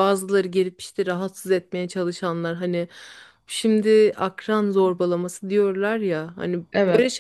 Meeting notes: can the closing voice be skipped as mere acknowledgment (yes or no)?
yes